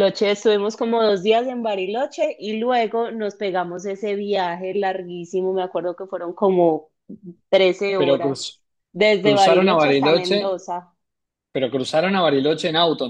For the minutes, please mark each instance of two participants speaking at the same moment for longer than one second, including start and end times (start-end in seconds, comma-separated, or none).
9.2-10.6